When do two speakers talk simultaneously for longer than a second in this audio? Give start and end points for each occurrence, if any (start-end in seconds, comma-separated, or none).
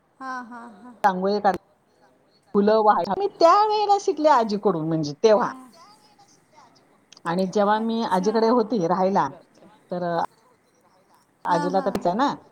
none